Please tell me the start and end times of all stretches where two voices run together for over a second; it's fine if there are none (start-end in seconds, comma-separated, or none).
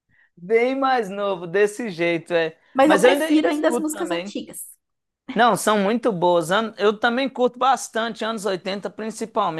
2.7-4.4